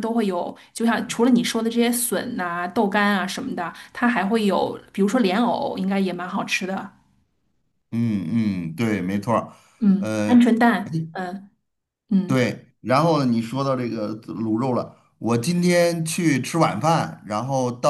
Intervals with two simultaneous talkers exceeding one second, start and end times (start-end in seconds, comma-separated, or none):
none